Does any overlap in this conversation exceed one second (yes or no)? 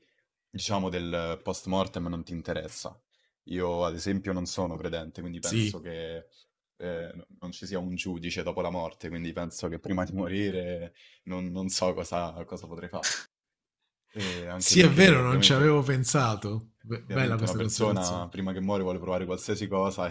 yes